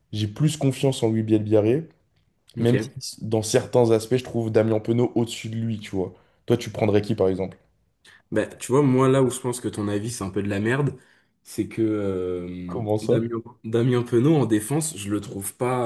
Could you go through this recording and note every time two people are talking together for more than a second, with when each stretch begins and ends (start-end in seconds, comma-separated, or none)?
none